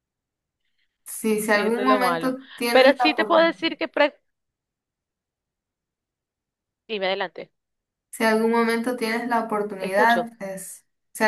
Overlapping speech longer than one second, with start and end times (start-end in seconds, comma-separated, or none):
1.5-3.7